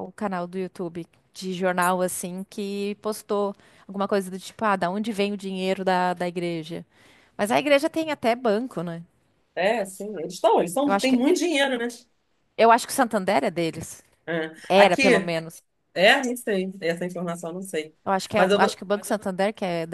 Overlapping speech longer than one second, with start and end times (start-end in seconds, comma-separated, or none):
none